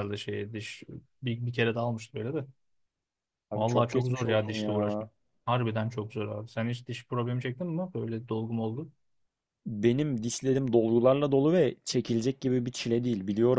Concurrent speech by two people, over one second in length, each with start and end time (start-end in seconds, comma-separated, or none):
3.5-5.1